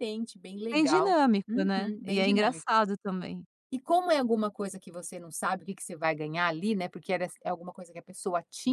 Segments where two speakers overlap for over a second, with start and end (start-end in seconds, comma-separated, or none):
0.7-2.7